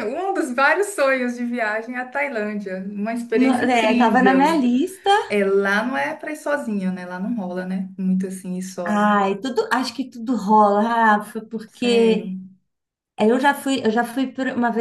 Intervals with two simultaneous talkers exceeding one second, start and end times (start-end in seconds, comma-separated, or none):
3.3-4.6